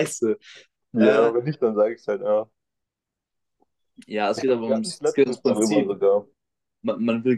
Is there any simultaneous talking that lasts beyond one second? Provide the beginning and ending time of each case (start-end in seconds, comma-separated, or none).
4.4-6.0